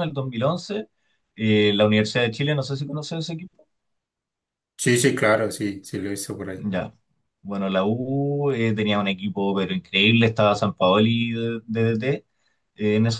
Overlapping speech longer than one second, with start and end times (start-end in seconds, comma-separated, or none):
none